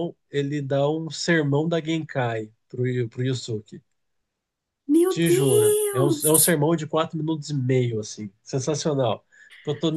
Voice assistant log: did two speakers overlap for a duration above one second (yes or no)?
yes